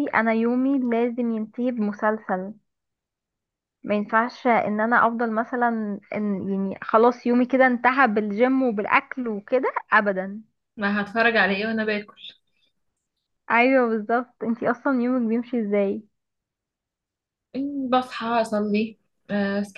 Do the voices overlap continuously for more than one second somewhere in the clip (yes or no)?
no